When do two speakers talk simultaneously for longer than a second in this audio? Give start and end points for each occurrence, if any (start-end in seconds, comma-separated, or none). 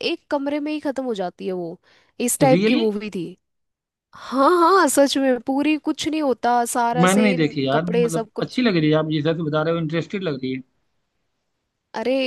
7.0-8.6